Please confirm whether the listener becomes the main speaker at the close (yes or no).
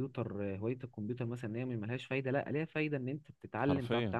no